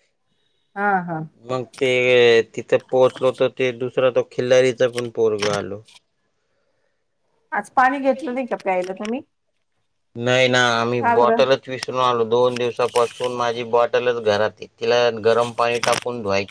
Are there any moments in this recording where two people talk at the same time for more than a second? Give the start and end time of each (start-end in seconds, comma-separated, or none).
none